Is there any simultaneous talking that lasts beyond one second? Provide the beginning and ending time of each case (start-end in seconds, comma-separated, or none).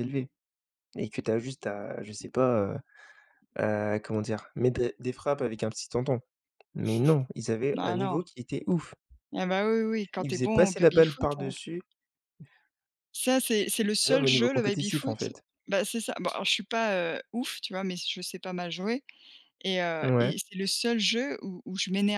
10.2-11.5, 14.1-15.4